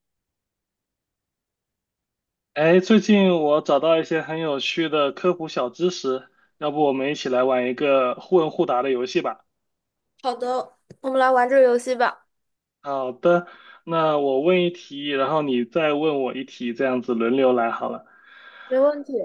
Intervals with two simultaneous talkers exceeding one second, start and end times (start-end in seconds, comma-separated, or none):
none